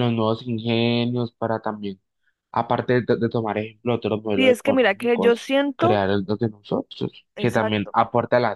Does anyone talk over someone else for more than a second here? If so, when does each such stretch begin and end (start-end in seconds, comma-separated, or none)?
4.3-6.0